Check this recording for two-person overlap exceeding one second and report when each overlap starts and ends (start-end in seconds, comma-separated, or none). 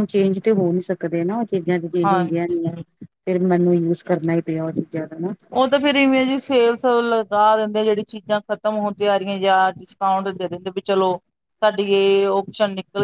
none